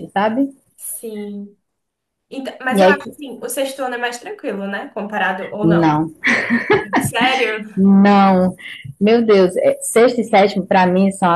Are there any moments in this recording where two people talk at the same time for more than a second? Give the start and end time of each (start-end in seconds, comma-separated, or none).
none